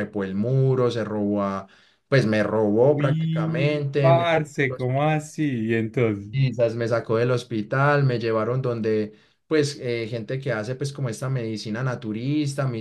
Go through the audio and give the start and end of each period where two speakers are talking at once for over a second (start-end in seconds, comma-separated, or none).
2.8-4.7